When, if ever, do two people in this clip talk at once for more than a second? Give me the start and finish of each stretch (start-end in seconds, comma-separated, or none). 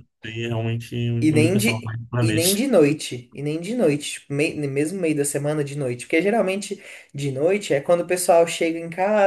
1.3-2.6